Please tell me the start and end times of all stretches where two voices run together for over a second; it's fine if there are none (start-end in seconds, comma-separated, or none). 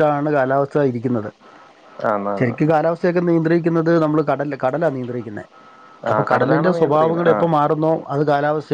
6.1-7.5